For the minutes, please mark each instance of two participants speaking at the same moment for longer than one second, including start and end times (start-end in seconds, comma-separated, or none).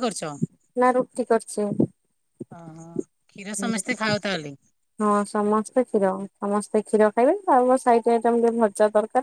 none